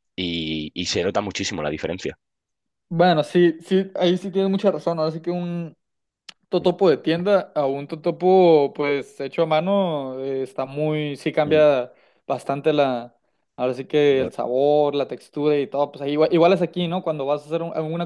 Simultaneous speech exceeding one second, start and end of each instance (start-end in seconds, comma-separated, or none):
none